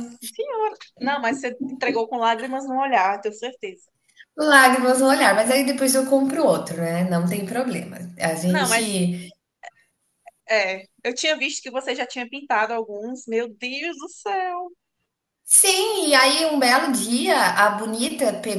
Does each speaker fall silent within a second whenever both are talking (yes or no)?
yes